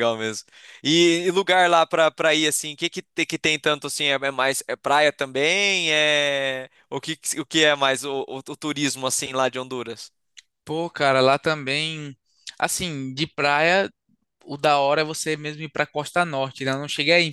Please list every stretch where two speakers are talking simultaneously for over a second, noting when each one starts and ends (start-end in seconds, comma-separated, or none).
none